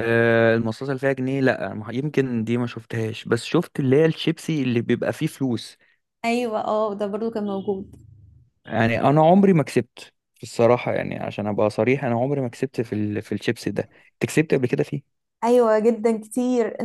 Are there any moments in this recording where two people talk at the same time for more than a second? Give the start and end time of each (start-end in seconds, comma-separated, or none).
none